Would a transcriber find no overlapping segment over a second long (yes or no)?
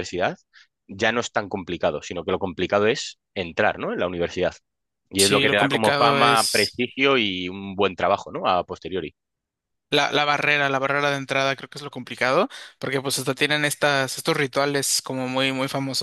no